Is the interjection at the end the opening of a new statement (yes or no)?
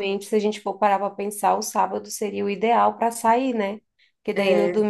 no